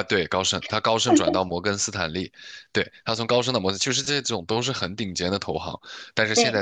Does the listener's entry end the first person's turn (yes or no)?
no